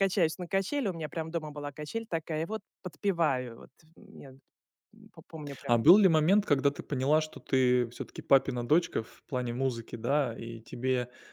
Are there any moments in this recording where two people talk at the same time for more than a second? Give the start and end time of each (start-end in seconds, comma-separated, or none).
none